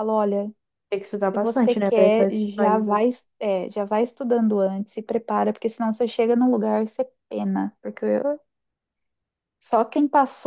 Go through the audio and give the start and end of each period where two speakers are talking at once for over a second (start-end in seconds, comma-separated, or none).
1.4-3.1